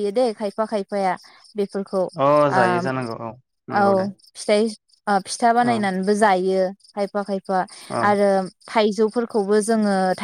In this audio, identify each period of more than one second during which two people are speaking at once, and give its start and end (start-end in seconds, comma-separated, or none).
none